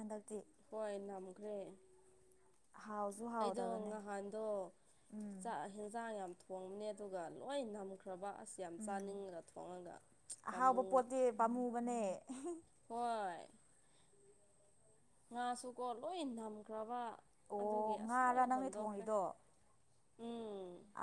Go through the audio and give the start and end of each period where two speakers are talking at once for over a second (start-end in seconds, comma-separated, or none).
17.6-19.1